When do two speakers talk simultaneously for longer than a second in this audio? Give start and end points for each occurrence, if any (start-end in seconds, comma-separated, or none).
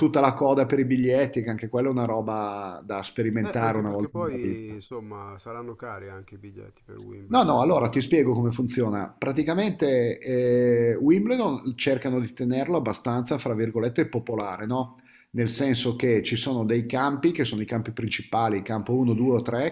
3.4-4.8